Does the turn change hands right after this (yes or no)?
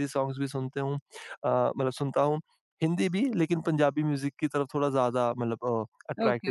yes